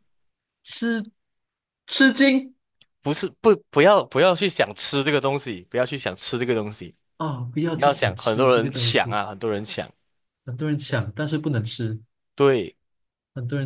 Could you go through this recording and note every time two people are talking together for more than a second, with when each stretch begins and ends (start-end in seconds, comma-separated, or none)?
7.7-9.2